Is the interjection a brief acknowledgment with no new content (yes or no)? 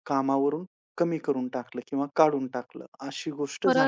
no